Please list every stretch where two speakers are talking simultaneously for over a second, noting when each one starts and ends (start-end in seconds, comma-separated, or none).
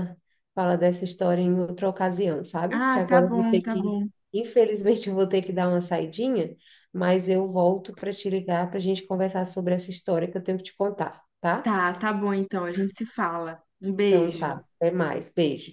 2.7-4.1